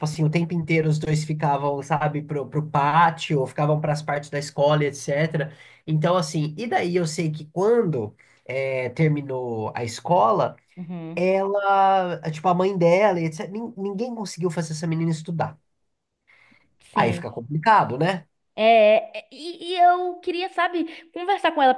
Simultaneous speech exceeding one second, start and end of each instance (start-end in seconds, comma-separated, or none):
none